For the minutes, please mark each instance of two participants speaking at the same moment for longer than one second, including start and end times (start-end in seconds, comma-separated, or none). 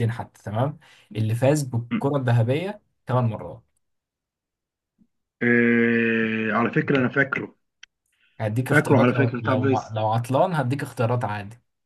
8.7-9.9